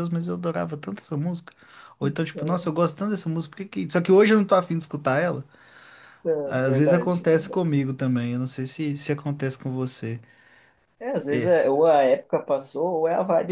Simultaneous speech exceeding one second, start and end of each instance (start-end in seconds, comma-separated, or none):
6.4-7.6